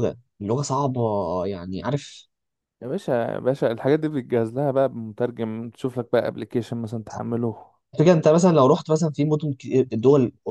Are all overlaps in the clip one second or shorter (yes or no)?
yes